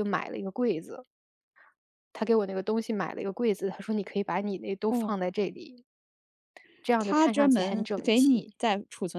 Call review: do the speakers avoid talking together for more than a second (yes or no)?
no